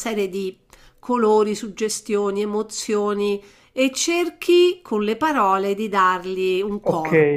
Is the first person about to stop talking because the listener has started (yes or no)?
yes